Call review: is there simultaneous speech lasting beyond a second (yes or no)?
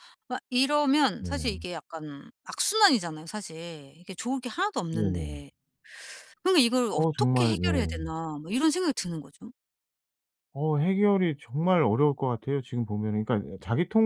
yes